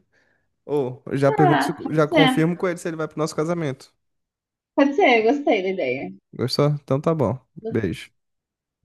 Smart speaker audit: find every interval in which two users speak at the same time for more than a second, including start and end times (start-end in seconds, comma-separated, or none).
1.2-2.5